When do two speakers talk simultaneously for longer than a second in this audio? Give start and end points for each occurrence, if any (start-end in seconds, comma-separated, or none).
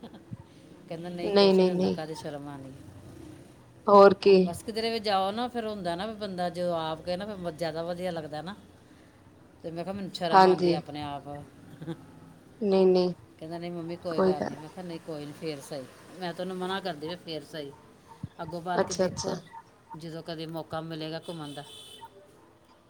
none